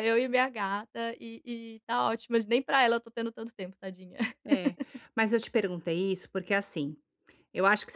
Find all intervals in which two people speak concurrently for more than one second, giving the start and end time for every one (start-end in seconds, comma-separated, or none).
none